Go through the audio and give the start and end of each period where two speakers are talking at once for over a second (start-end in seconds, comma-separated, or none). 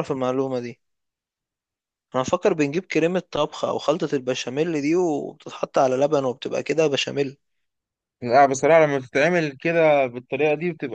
none